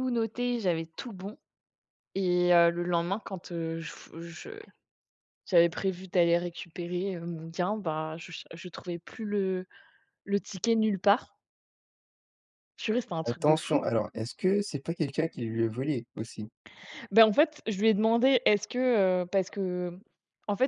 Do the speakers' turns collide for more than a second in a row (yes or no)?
no